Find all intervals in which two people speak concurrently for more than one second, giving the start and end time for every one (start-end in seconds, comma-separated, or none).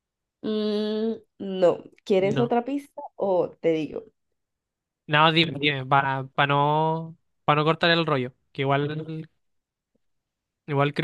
none